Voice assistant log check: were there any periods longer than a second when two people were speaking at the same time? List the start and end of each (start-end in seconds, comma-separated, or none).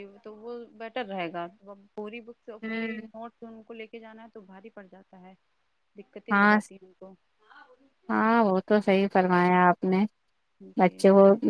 none